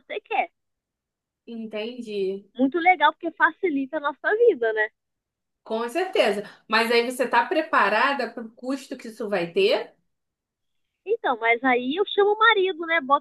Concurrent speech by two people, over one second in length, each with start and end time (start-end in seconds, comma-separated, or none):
none